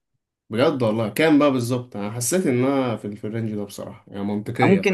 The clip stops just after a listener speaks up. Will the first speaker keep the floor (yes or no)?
no